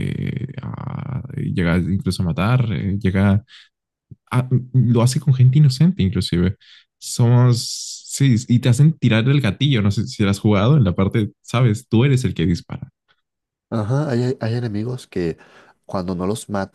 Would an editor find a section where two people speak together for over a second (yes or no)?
no